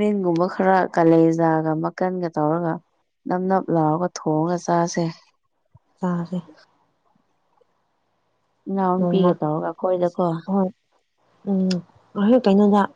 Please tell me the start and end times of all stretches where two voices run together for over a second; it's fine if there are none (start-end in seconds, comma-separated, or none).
9.0-10.3